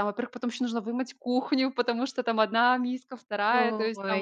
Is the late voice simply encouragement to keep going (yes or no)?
yes